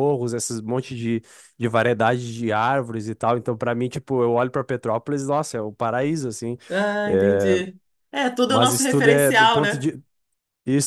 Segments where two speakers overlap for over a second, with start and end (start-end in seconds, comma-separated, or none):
8.5-9.8